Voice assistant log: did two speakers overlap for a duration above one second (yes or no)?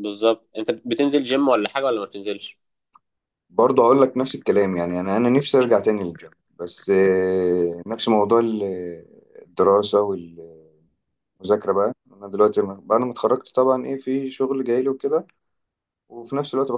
no